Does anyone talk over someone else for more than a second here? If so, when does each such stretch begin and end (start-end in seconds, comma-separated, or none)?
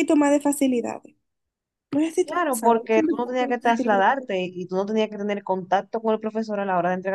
2.2-3.9